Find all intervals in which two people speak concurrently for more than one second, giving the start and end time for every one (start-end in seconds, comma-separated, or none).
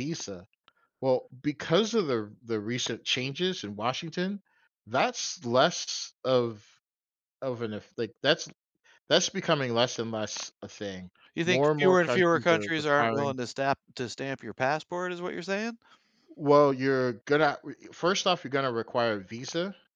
11.4-13.3